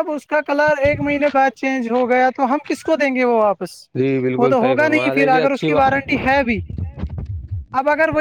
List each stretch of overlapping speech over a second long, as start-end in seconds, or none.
4.4-6.0